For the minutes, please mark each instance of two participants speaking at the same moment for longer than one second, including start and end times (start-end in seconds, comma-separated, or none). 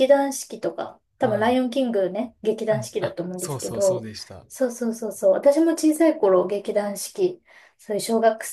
2.7-4.1